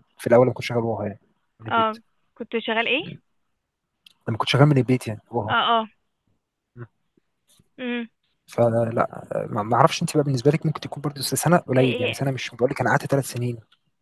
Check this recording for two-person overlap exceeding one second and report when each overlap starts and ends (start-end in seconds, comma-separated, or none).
none